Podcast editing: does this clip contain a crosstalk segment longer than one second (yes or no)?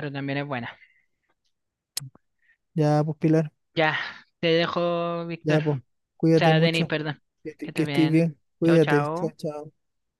yes